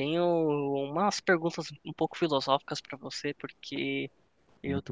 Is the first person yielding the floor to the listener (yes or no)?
no